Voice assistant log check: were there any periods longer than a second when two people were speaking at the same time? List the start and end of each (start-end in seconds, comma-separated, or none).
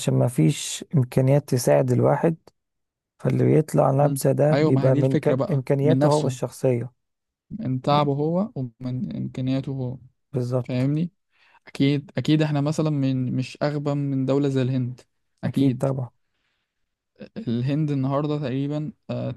4.0-6.4